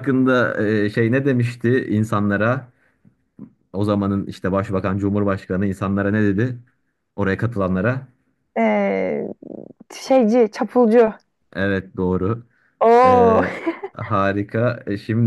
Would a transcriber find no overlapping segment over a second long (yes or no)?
yes